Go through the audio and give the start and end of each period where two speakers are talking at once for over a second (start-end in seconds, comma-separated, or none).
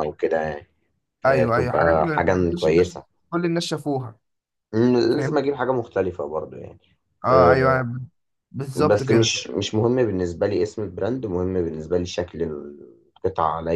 1.3-3.0